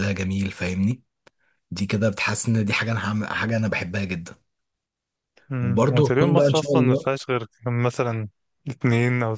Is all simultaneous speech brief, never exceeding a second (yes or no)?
no